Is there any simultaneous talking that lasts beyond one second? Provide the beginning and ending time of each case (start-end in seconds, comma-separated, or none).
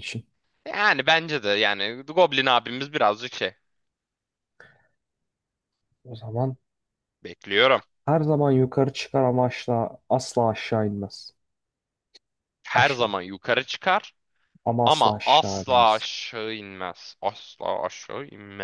14.8-16.0